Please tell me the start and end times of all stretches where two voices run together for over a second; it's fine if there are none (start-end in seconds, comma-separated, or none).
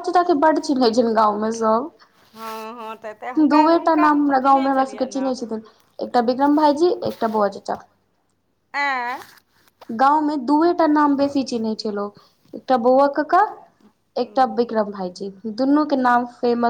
3.5-5.3